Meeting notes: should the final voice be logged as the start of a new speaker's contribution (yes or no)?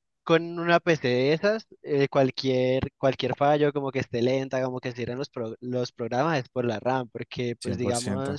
no